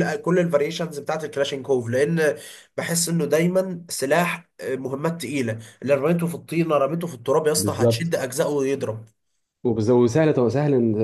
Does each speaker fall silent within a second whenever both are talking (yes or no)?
yes